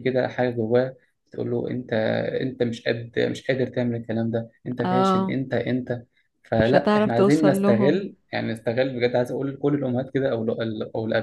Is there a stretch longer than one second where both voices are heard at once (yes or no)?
yes